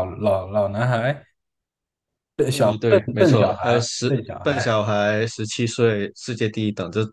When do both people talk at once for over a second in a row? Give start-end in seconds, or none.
2.9-4.6